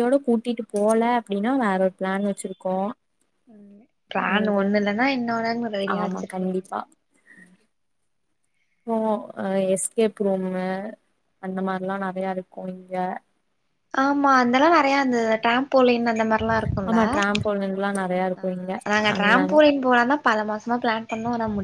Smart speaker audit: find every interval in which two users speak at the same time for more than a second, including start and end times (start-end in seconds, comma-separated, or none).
none